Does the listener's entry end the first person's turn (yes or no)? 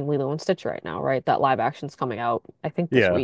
no